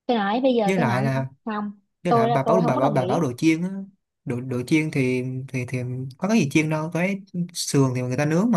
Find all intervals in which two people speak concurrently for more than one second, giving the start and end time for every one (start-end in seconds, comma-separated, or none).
2.1-3.3